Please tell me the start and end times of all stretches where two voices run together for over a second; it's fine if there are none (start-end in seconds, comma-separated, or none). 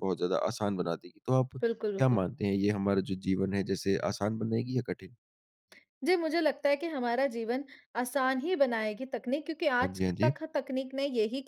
none